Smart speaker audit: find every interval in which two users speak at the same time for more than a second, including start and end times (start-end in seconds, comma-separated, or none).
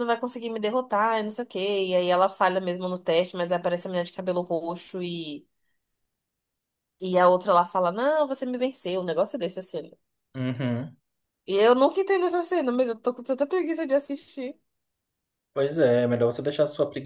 none